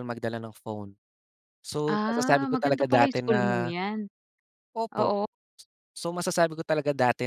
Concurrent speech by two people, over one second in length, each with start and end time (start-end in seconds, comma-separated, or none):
1.9-3.7